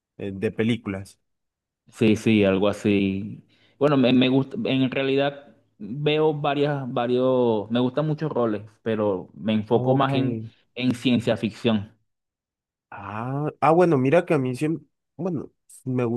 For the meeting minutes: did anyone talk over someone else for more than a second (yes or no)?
no